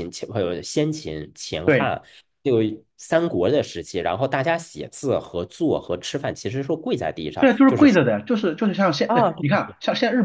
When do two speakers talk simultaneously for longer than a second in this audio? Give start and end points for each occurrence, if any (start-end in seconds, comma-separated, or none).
none